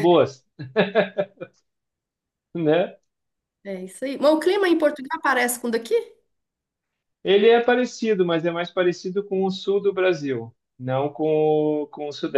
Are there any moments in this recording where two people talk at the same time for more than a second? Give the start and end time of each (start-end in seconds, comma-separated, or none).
none